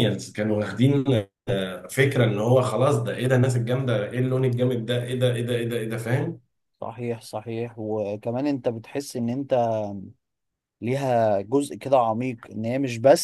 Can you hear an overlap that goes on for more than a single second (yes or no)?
no